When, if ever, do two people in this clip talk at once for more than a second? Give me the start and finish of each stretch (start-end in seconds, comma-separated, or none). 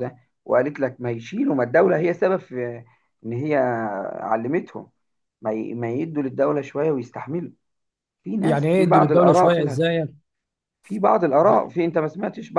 8.4-10.1